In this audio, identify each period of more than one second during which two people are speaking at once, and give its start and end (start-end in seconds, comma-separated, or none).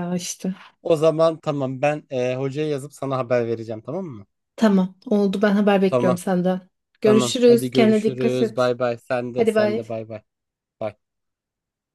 7.0-8.7